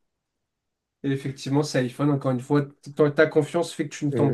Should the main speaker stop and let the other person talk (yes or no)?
yes